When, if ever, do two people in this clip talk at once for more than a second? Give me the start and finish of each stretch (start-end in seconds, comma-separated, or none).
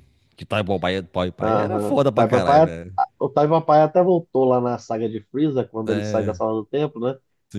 1.4-2.7